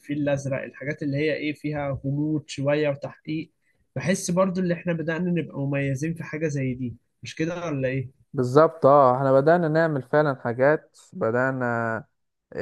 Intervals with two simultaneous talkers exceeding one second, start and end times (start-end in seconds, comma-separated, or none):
none